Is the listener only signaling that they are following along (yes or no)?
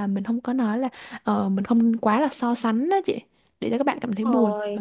no